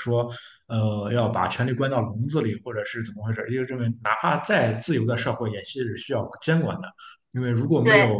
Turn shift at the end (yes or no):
no